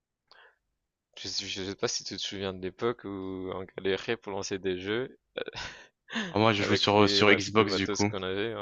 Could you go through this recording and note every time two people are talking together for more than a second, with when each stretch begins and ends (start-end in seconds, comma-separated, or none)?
6.6-8.1